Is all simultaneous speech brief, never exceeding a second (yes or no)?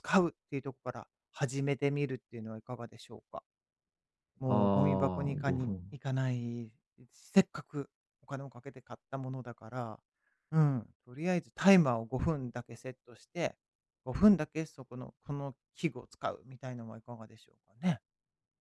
no